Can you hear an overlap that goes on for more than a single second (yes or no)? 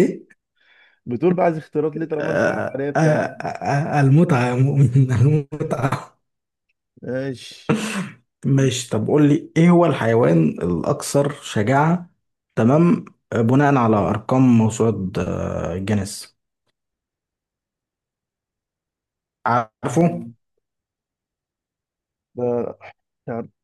yes